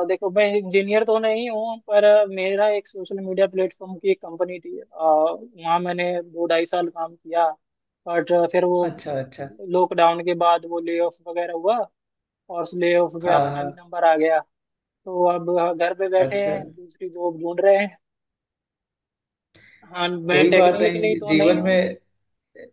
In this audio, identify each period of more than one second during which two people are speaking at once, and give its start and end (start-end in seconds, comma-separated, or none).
20.3-21.8